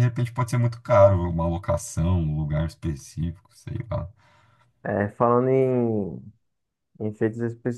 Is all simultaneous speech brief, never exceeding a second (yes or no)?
yes